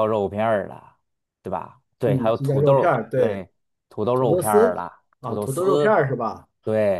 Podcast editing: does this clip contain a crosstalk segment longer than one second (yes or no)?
yes